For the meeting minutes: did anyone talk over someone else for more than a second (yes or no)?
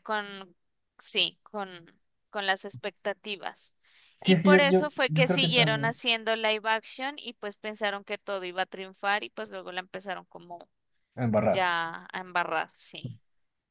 yes